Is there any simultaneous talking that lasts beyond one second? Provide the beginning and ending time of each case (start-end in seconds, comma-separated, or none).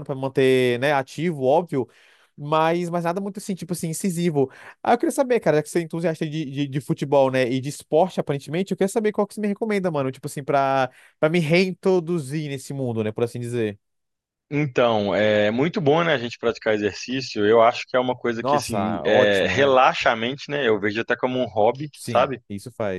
18.4-19.8